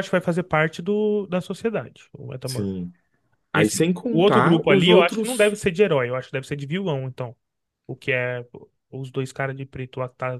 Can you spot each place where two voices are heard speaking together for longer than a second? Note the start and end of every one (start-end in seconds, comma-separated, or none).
3.5-5.6